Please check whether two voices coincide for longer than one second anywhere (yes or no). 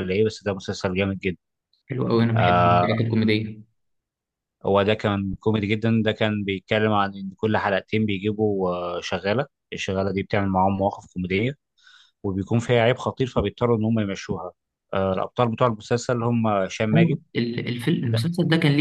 no